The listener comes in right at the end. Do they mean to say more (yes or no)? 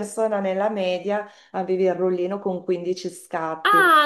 yes